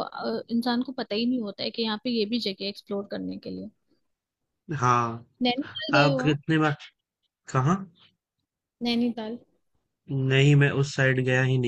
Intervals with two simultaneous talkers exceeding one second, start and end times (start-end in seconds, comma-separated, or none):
none